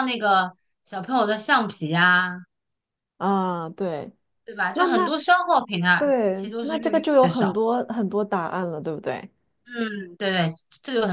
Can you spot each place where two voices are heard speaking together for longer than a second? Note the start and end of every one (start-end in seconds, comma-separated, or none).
6.0-7.6